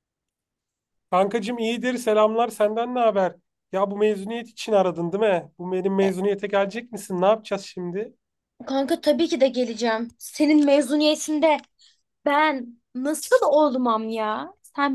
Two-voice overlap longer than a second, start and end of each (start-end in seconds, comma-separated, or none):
none